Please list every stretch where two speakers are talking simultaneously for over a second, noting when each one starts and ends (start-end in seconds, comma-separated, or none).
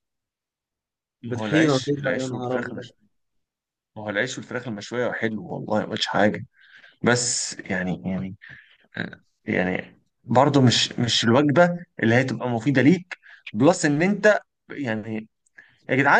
1.2-2.9